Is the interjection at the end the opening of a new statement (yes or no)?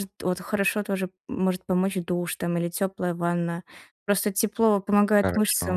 no